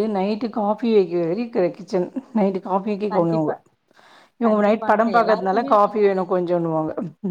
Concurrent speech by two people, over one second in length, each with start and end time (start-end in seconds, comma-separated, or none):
4.5-6.2